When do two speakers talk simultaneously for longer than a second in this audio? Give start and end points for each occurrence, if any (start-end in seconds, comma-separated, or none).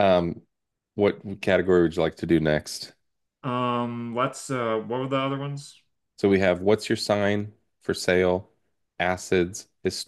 none